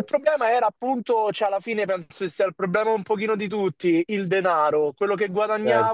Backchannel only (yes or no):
yes